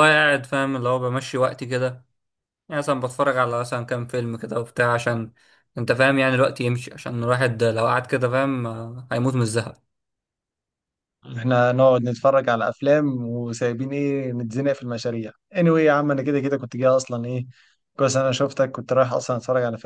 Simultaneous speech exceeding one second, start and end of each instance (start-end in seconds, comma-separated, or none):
none